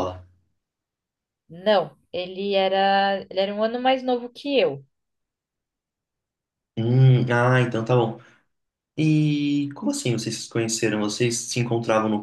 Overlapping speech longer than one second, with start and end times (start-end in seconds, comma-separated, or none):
none